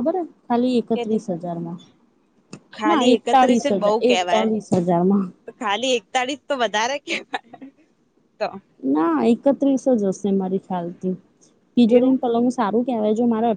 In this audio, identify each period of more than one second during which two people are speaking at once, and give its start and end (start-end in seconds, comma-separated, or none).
2.9-4.5